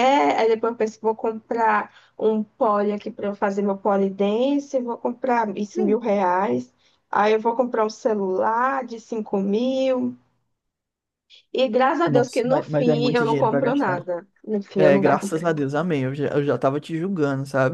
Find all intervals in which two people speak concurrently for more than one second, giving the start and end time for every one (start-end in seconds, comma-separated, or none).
12.1-14.1